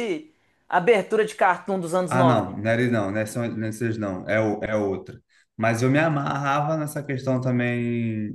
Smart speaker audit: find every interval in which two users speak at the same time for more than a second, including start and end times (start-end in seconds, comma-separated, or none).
none